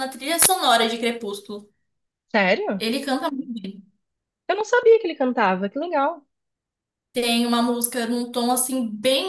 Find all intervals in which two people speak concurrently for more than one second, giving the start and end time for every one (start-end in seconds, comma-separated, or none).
none